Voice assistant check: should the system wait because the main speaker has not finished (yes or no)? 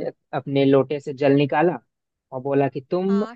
yes